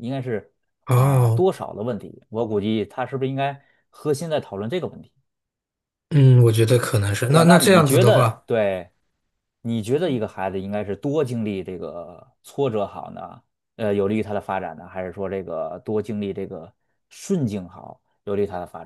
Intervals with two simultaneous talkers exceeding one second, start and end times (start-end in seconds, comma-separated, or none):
7.2-8.4